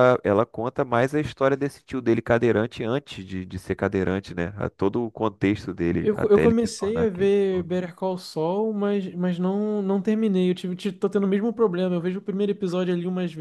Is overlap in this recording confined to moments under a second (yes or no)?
no